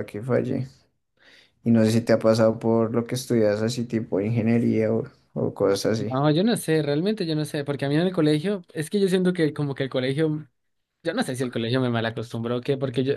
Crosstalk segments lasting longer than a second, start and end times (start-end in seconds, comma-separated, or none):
none